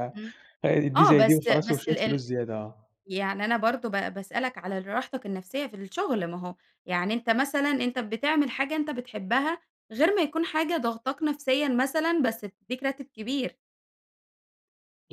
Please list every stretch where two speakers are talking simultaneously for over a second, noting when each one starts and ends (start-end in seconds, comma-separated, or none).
0.9-2.2